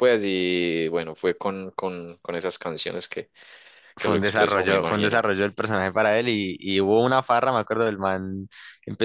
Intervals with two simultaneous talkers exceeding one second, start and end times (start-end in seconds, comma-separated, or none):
4.0-5.2